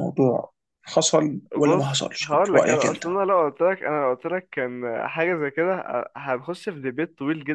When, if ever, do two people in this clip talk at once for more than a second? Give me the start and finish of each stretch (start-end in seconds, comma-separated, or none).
1.6-3.0